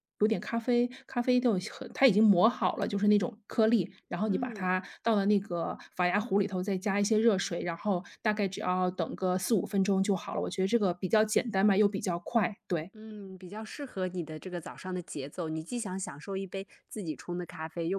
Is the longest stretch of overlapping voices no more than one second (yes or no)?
yes